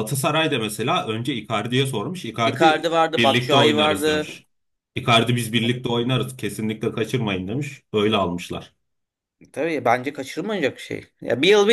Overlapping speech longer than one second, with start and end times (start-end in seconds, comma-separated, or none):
2.4-4.4